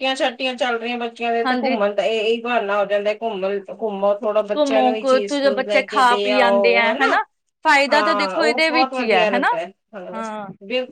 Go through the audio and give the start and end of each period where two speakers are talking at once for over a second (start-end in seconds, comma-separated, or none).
4.6-6.9, 7.9-9.5